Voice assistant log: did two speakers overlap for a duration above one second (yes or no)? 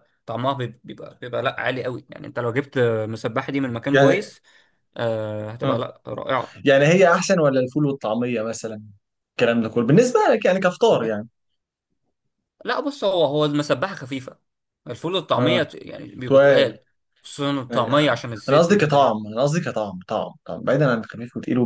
yes